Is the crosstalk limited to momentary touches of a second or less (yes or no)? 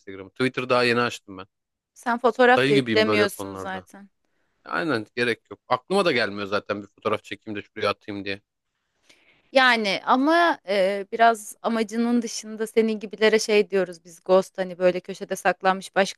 no